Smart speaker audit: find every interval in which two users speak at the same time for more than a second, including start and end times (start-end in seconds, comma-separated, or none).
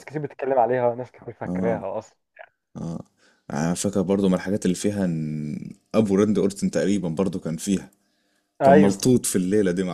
none